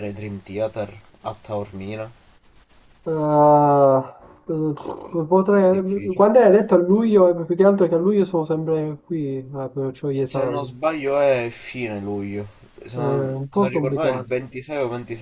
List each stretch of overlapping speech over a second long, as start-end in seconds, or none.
12.9-14.3